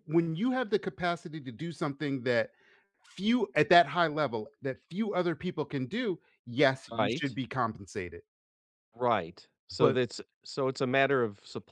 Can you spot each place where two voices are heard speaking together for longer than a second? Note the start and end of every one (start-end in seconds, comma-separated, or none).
none